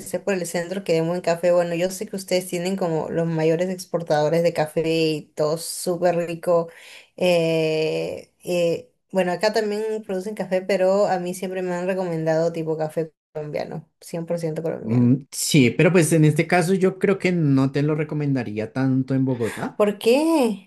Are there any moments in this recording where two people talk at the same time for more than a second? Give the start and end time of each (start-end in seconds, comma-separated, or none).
none